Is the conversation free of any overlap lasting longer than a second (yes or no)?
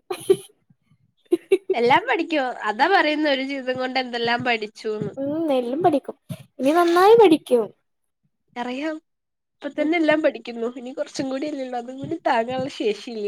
yes